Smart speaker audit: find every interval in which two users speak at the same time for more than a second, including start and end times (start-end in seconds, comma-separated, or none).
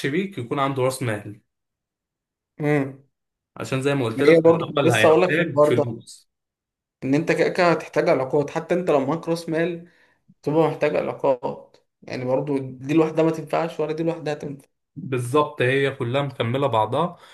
4.3-5.8